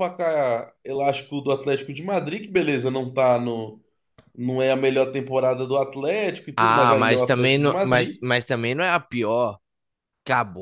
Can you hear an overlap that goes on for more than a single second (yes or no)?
yes